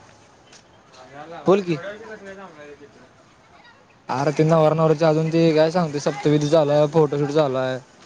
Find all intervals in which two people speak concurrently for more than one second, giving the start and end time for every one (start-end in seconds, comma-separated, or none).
none